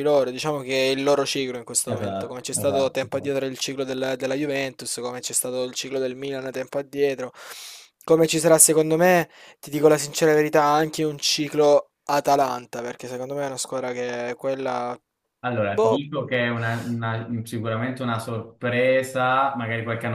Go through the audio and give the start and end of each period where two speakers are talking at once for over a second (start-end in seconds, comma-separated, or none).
1.9-3.4